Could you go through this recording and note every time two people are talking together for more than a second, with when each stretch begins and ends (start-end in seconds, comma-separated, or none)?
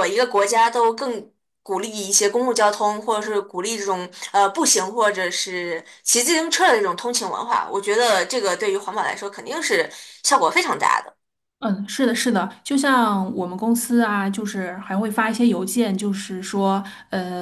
none